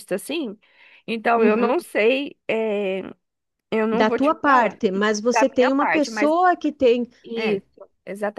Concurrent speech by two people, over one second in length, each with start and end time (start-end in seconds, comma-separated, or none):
3.9-6.3